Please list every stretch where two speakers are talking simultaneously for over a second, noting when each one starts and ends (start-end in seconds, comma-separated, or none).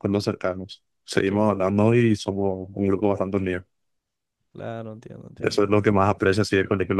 none